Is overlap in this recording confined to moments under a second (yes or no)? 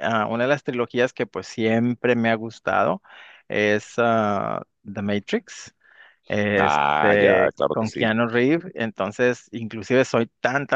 no